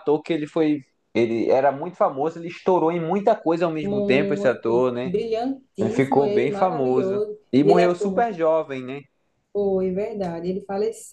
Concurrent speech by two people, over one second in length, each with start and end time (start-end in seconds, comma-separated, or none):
3.8-5.1, 5.8-8.4